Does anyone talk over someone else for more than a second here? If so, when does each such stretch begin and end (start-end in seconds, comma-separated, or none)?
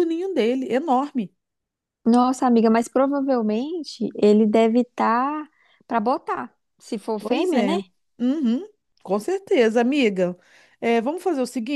none